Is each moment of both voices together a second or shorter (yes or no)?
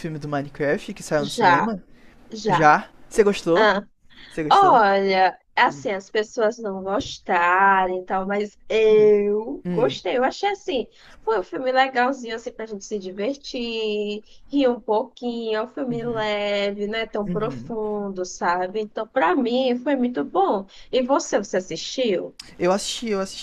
yes